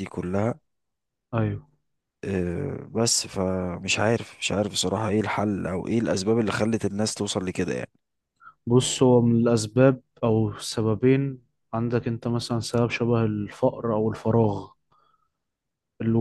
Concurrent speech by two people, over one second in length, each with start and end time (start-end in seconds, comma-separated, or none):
none